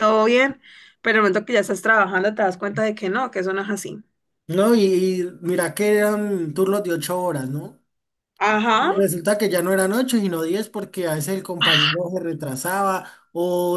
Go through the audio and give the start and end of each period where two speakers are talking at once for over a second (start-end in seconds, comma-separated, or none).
none